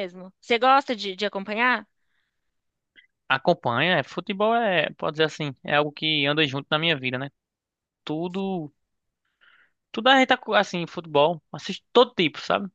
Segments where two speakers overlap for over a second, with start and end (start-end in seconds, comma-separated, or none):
none